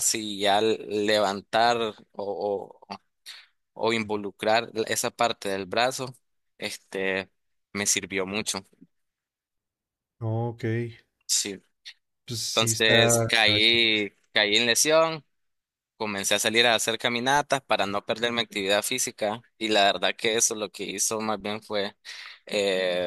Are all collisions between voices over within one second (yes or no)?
no